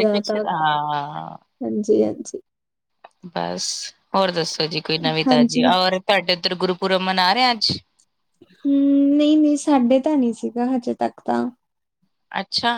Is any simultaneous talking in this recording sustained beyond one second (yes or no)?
no